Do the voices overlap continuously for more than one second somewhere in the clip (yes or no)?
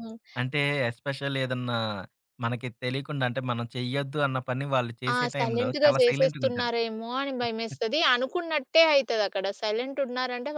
yes